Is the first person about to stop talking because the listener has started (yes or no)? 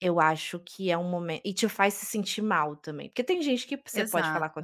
no